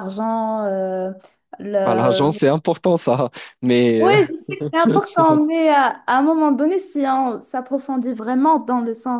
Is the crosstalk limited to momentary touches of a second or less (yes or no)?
yes